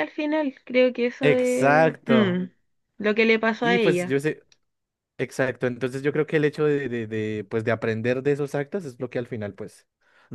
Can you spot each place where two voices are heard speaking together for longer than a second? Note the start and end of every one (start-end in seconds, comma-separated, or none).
1.2-2.4